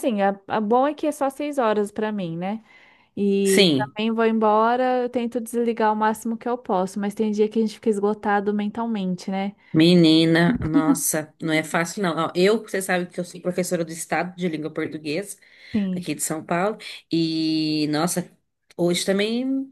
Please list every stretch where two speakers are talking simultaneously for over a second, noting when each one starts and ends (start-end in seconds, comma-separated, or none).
none